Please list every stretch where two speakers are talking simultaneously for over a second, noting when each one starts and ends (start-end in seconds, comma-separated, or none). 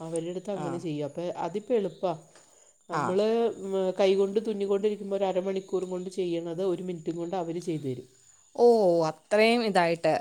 none